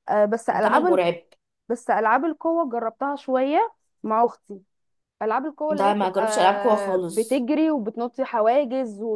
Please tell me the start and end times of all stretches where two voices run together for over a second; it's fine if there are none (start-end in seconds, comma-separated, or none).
5.8-7.4